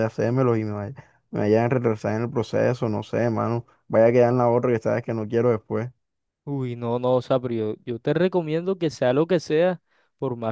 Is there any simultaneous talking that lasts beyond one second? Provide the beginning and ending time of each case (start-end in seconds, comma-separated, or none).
none